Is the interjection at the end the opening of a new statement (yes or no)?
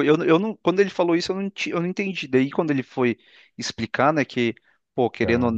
no